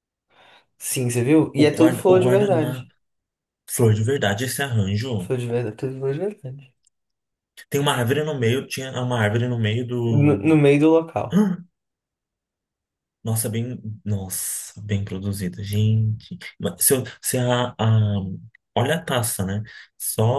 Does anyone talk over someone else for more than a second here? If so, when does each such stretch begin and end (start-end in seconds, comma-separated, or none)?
1.6-2.9